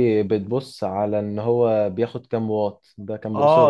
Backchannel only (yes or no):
no